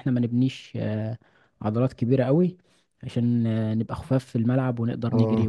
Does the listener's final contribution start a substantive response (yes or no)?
yes